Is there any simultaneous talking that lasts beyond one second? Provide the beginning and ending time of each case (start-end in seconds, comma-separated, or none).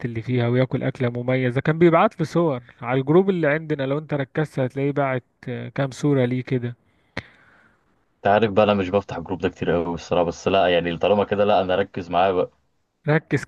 none